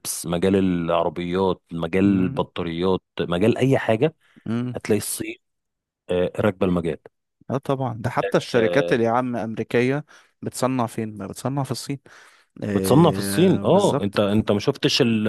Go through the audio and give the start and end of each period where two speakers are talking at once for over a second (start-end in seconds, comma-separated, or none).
12.7-14.2